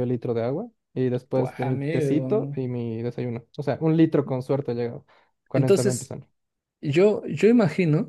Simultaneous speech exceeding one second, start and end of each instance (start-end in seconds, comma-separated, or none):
1.3-2.6